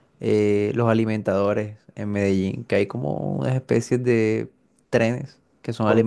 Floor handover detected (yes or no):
no